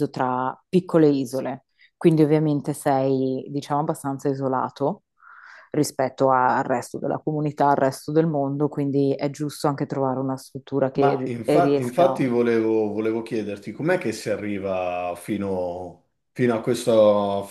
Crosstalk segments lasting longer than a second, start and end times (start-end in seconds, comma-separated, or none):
10.9-12.3